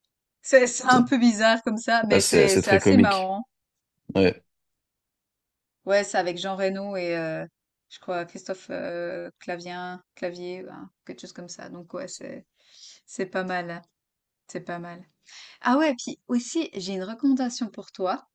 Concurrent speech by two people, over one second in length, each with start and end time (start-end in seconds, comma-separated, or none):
2.1-3.4